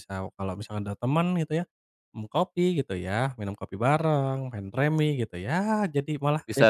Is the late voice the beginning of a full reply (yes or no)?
yes